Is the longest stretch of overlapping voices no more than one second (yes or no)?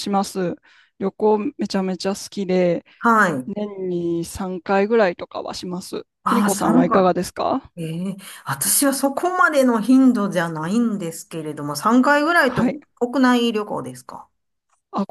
no